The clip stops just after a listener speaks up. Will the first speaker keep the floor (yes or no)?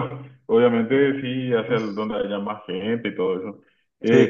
yes